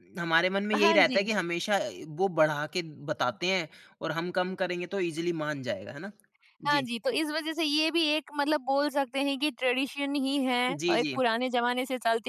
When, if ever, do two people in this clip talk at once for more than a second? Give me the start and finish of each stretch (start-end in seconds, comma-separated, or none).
none